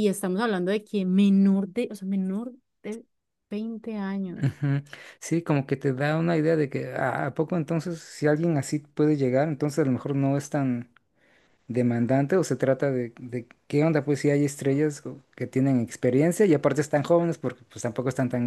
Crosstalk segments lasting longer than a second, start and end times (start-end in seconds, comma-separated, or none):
none